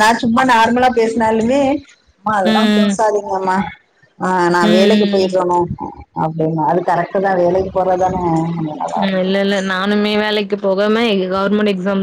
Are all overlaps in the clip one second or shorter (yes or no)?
yes